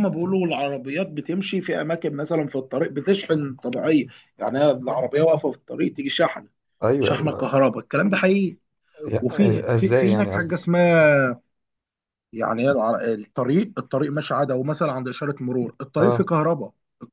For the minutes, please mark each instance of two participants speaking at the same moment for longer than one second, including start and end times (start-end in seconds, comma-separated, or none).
9.2-10.7